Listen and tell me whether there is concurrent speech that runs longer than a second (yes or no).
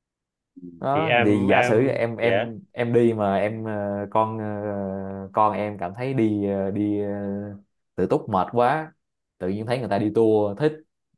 yes